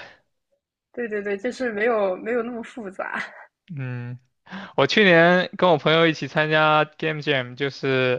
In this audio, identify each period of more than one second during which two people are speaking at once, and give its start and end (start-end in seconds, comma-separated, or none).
none